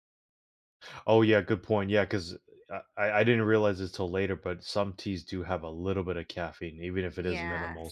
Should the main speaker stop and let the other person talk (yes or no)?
yes